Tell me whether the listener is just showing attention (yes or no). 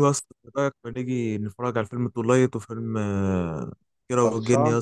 yes